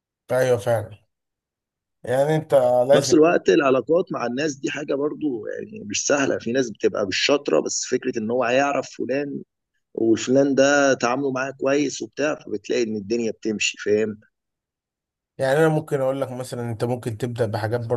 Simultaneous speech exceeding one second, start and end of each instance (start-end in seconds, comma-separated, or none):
none